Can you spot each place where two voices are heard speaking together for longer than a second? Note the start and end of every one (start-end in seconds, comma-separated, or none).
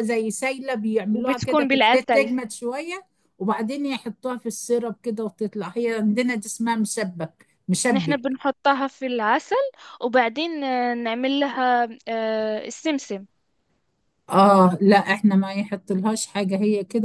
1.1-2.3